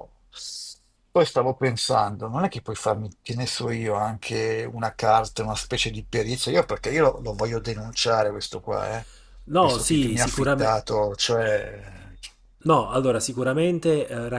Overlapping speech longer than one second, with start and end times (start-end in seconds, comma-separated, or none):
9.6-10.8